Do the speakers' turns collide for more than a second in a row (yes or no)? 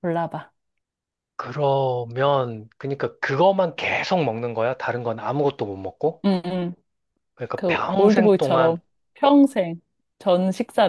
yes